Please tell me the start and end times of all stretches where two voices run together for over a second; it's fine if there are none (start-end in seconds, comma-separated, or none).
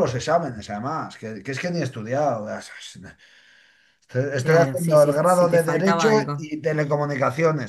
4.4-6.5